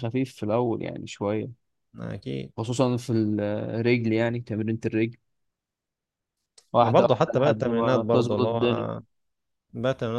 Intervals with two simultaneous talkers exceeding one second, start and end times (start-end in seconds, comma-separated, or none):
6.8-8.6